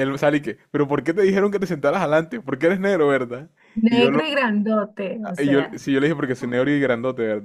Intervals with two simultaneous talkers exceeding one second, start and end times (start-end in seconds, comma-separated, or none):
none